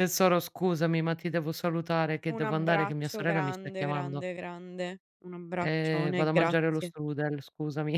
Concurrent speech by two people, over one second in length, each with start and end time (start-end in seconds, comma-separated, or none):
2.3-4.2, 5.6-6.9